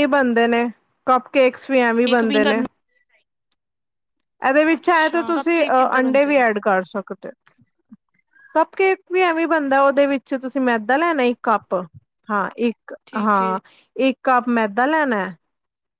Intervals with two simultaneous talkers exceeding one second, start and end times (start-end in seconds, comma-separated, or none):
4.8-6.4